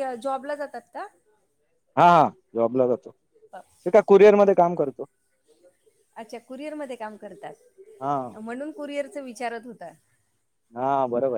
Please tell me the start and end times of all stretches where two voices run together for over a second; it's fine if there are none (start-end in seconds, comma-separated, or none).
none